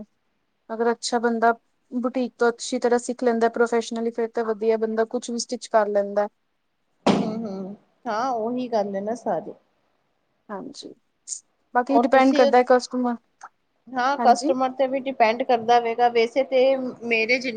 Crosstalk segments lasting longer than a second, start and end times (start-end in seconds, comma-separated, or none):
none